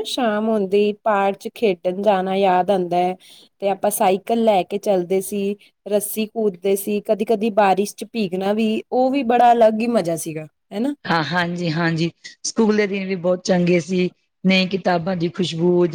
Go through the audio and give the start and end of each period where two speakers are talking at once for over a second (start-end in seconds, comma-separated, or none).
none